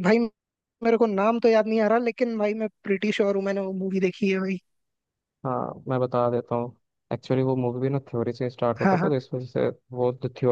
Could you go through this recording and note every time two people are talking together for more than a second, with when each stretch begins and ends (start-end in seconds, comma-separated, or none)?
none